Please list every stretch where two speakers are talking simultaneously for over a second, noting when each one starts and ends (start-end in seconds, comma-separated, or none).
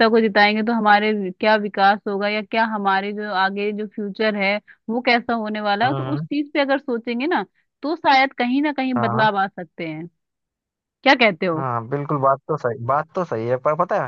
none